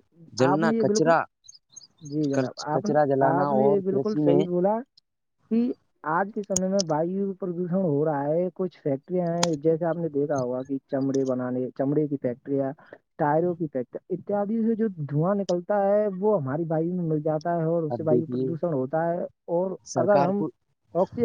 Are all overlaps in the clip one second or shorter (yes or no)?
no